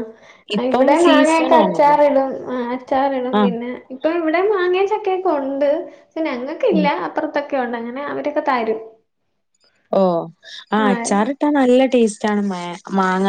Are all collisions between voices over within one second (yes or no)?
no